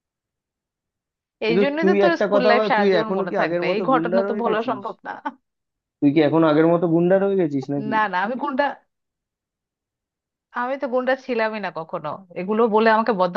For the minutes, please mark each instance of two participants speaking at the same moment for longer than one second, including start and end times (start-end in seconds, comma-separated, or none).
1.5-4.8